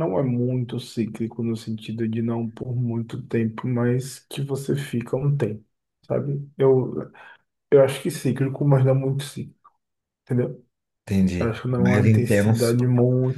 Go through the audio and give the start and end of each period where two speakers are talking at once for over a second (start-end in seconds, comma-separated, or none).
11.4-12.8